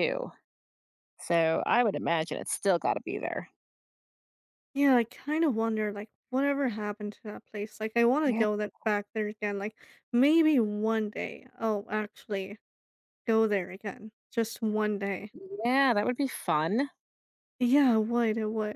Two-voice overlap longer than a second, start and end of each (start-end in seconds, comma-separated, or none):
none